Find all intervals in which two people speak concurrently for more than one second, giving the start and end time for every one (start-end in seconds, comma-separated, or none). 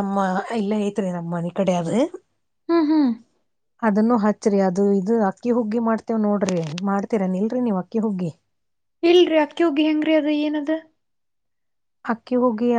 none